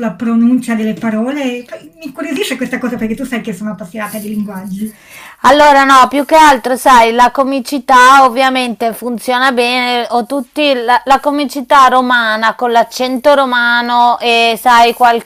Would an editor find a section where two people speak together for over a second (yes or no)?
no